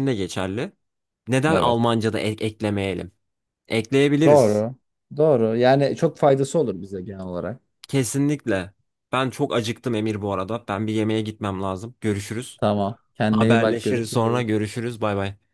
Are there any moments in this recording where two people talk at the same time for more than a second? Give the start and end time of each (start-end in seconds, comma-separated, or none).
13.3-14.6